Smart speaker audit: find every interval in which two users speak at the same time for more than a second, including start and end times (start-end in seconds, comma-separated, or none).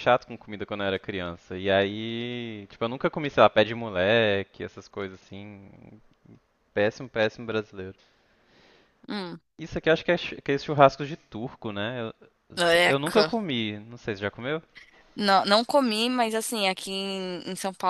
none